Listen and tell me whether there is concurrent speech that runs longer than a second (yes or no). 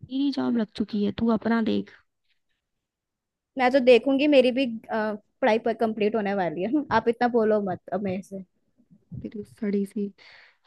no